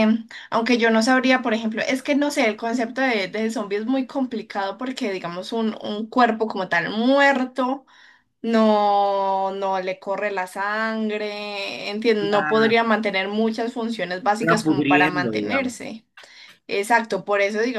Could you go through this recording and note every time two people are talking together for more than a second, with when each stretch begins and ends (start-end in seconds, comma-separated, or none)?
14.4-15.8